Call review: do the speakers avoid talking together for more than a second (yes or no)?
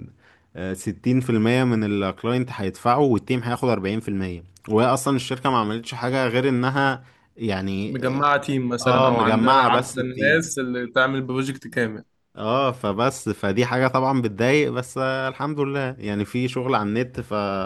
no